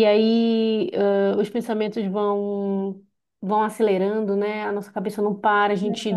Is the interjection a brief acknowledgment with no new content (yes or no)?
yes